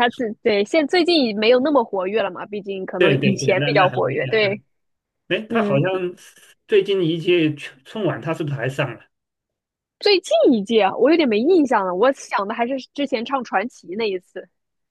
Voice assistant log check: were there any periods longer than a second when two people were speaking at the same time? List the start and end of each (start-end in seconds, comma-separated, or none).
3.0-4.6